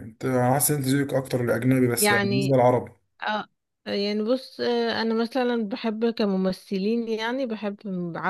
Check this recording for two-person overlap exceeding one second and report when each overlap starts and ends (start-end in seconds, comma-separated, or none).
none